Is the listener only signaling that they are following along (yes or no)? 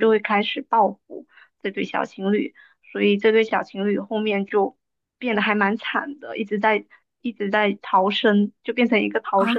no